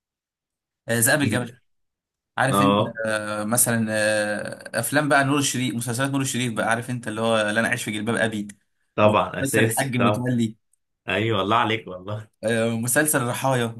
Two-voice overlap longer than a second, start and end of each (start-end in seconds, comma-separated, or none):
9.0-10.3